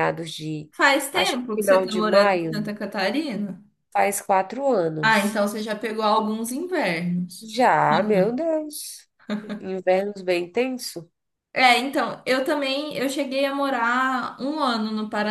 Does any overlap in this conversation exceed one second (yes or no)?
yes